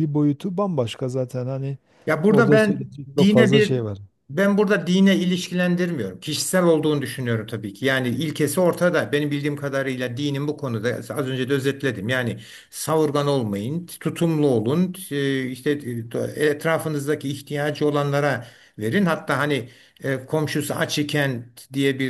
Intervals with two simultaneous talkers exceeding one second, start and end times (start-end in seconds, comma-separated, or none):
2.3-3.8